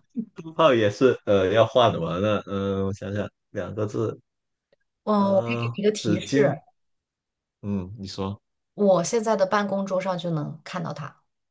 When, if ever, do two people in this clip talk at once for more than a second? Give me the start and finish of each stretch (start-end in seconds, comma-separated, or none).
5.2-6.6